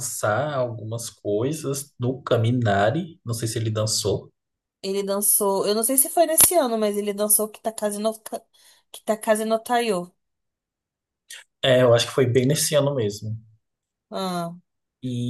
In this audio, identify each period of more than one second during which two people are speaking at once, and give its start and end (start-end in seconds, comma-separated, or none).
none